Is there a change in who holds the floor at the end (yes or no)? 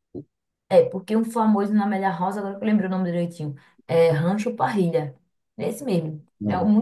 no